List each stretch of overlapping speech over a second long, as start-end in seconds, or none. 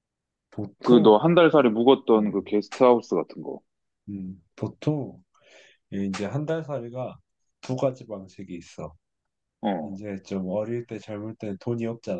none